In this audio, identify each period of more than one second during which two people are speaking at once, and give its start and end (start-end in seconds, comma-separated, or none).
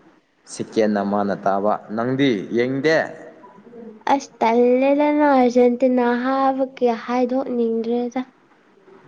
none